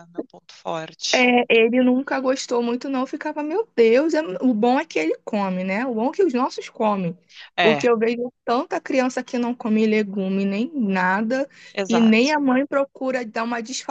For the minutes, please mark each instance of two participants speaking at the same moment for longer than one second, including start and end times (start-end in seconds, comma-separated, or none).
none